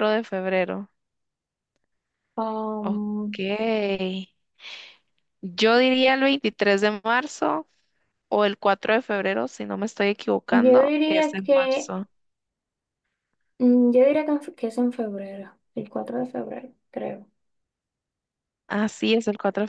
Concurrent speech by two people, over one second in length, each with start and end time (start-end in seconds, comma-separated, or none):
10.5-11.9